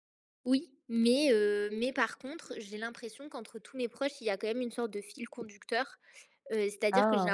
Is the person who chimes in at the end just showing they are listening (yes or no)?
yes